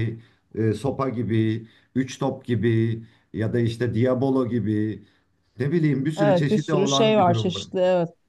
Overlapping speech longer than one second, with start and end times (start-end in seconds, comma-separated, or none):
6.2-7.6